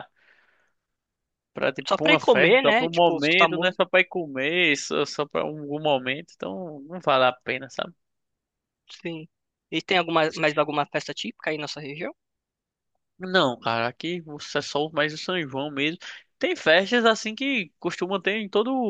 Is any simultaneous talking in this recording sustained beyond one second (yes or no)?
yes